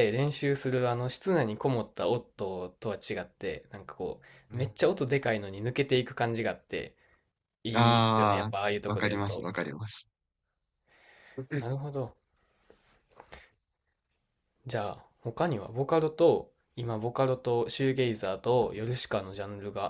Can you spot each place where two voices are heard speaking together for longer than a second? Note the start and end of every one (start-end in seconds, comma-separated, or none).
7.7-9.5